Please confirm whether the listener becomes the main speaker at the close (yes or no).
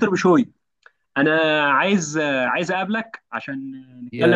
yes